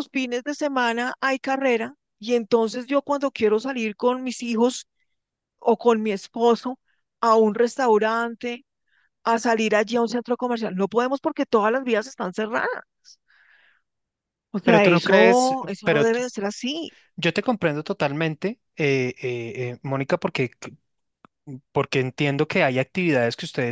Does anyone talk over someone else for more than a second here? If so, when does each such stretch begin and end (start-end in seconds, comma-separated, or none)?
14.6-16.2